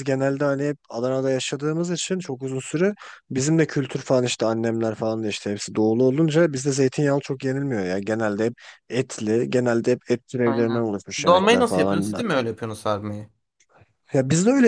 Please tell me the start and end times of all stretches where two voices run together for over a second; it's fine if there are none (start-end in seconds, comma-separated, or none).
10.4-12.2